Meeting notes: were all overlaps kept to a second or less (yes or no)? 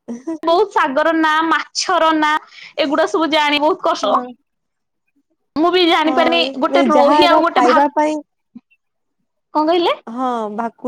no